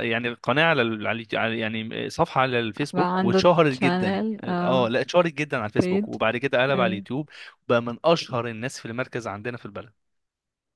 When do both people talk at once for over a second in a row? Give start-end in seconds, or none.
2.9-4.9